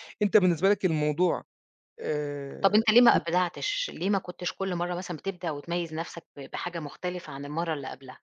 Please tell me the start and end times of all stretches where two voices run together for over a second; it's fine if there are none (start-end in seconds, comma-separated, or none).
none